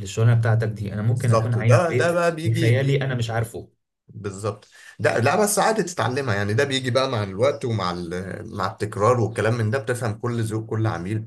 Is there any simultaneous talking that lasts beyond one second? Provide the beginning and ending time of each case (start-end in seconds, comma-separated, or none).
1.0-3.1